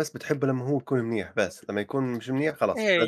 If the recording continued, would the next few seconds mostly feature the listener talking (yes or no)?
yes